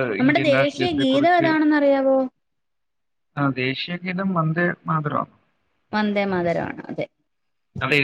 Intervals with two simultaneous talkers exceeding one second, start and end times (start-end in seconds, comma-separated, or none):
none